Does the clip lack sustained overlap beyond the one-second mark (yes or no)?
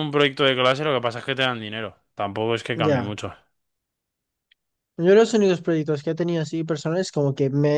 yes